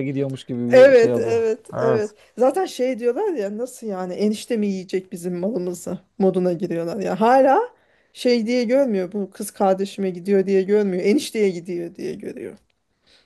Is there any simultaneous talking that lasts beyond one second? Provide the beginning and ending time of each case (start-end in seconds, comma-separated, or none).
0.7-2.1